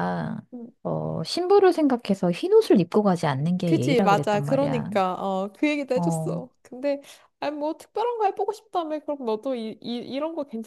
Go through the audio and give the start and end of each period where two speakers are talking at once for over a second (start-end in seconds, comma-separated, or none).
3.6-4.9